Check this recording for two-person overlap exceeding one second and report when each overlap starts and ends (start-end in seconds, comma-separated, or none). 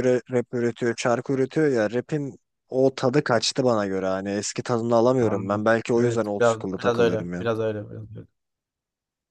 5.2-7.4